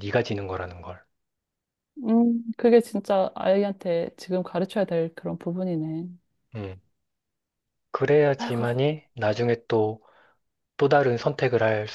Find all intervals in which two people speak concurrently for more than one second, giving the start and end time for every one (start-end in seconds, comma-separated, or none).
none